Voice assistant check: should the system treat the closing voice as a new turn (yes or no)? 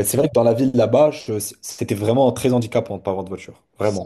yes